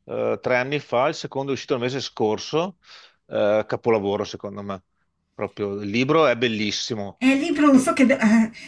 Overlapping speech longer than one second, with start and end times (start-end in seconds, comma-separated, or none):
none